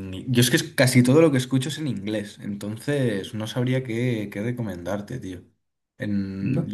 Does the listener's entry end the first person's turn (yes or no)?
yes